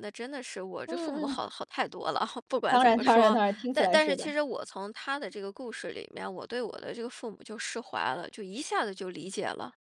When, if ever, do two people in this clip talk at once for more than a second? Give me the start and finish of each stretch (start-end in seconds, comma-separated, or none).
2.7-4.3